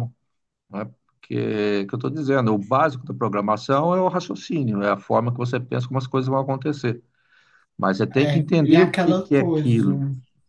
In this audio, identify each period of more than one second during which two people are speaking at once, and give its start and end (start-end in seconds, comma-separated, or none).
8.2-9.9